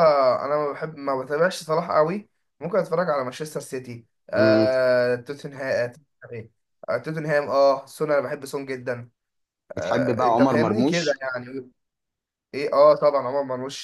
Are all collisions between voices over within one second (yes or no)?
no